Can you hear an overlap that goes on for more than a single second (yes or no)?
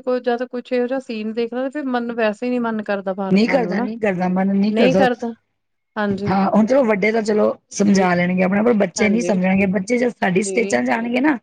no